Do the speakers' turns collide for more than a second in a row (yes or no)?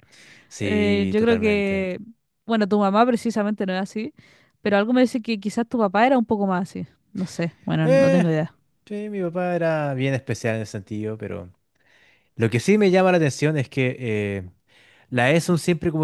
yes